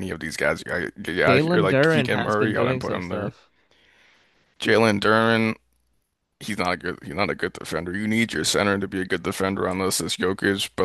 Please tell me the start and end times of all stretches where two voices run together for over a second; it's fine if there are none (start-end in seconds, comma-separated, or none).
1.2-3.3